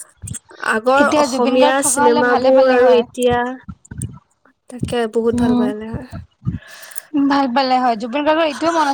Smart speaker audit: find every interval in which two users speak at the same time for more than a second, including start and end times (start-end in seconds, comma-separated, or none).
1.0-3.0